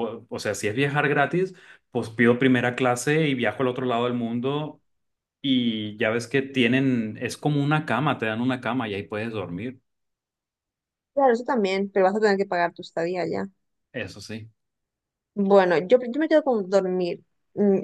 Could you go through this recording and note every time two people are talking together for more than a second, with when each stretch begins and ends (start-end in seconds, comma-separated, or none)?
none